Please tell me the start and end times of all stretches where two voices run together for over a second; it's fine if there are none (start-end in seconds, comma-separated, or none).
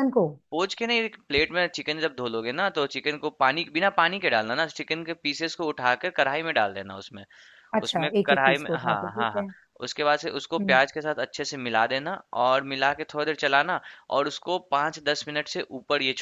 7.8-9.4